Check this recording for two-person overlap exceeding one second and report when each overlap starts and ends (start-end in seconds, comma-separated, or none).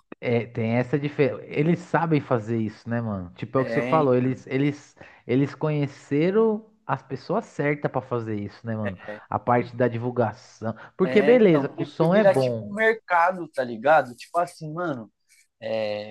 11.0-12.7